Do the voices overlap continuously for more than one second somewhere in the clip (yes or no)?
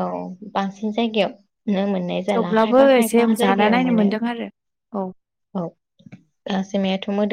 yes